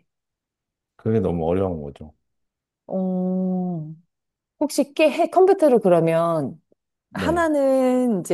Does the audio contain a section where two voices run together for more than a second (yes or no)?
no